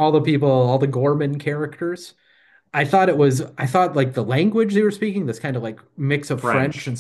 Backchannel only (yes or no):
yes